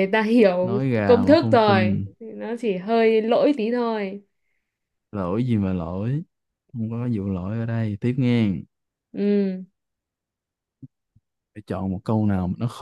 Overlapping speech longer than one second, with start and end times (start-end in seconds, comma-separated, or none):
0.6-2.0